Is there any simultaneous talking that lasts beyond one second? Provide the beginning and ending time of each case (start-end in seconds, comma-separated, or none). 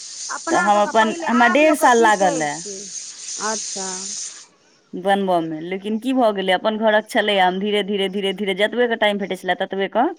0.5-2.5